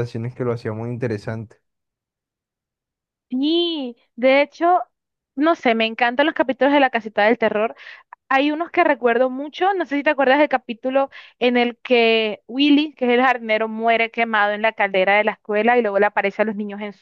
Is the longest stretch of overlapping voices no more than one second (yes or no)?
yes